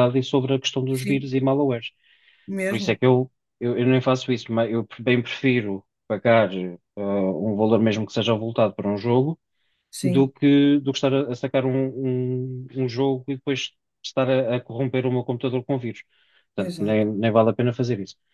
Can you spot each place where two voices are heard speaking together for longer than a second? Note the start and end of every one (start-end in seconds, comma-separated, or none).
none